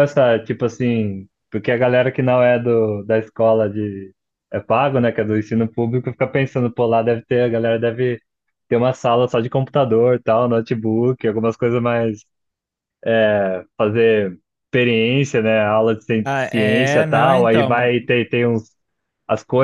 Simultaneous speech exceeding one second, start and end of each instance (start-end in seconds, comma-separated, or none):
16.2-17.9